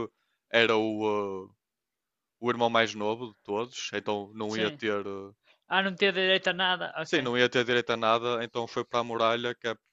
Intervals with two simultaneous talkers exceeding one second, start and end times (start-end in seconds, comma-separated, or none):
none